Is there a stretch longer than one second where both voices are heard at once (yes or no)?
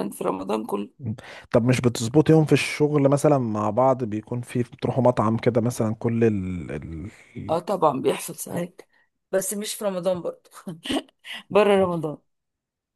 no